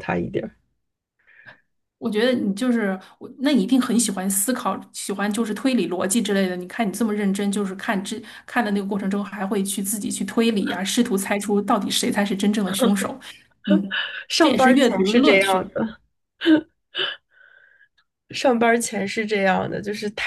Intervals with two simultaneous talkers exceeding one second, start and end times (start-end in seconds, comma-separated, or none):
14.4-15.8